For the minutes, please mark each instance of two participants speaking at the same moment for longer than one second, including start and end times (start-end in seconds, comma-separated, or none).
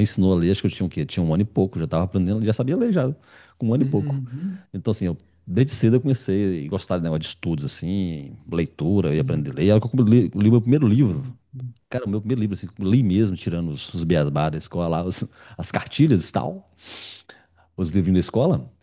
none